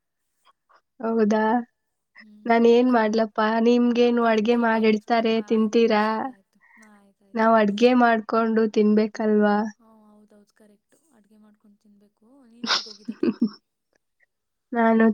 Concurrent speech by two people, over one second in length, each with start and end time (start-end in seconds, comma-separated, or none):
4.1-6.0